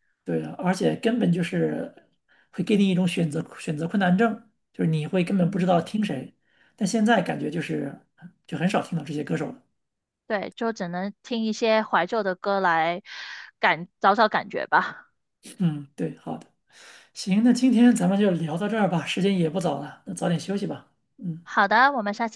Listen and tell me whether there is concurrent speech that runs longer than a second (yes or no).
no